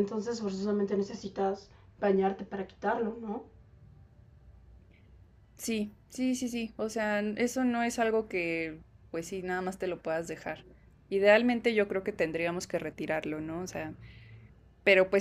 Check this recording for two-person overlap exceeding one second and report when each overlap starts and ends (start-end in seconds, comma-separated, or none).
none